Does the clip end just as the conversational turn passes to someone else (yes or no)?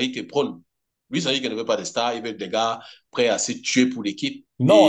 yes